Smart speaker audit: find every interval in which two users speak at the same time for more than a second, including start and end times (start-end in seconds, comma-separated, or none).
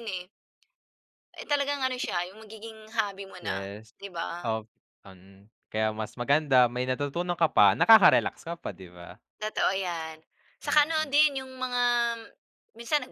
none